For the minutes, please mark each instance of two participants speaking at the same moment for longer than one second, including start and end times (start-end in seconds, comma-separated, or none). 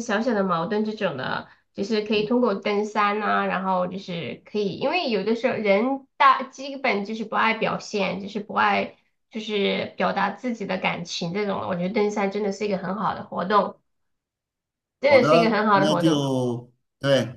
15.1-16.2